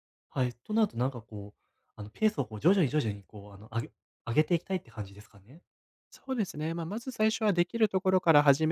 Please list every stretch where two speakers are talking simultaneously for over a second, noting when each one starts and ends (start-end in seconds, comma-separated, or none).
none